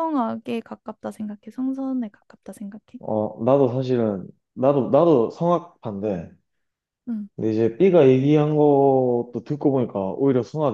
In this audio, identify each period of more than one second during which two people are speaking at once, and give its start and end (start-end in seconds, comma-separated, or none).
none